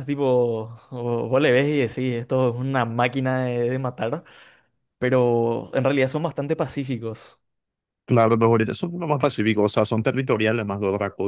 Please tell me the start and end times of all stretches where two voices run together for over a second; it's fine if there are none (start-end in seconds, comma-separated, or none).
none